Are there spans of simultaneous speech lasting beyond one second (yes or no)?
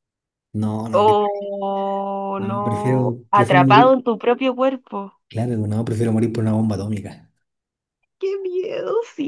yes